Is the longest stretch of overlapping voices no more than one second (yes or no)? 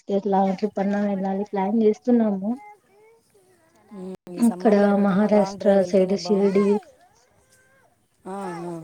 no